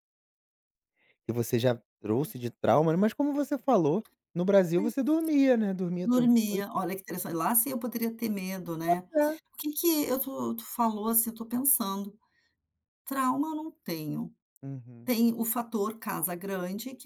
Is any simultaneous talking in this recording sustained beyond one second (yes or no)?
no